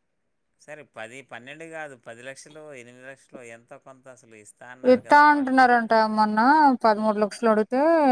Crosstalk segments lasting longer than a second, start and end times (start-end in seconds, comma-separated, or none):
none